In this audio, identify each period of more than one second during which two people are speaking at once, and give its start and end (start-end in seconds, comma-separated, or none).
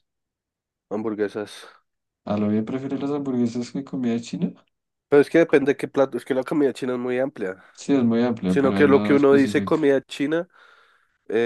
8.4-9.8